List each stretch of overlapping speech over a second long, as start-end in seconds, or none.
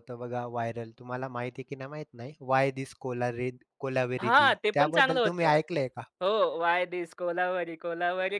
4.2-5.5